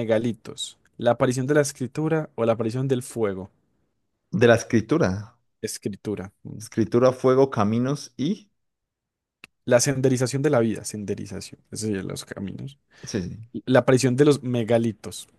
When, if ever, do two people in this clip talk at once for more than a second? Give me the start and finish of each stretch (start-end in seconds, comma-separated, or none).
none